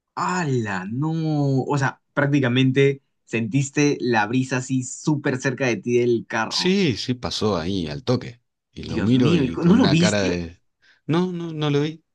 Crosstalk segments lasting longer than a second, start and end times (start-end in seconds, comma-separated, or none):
8.8-10.4